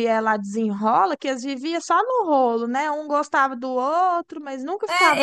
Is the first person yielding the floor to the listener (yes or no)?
yes